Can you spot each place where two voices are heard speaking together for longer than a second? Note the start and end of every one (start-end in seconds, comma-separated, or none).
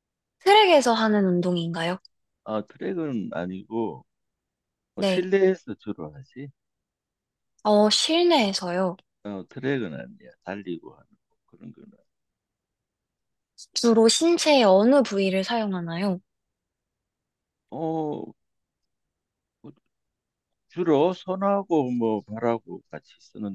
none